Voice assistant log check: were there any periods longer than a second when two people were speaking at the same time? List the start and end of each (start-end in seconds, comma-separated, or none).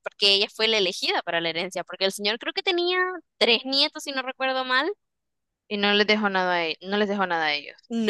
none